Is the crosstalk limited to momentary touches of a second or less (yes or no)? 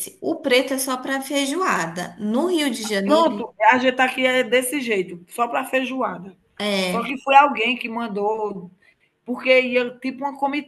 yes